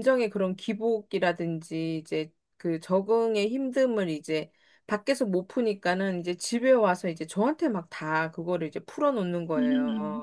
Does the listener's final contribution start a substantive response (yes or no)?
yes